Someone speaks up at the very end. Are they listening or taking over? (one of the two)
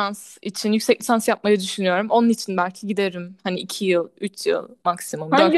taking over